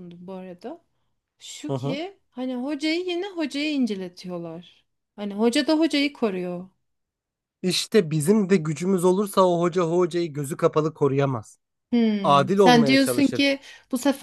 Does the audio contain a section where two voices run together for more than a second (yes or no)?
yes